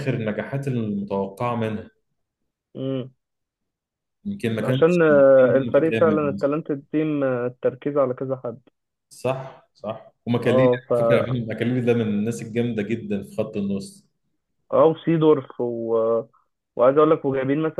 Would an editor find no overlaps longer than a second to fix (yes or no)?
no